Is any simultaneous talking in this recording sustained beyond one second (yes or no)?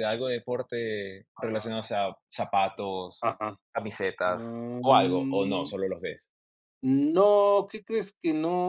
yes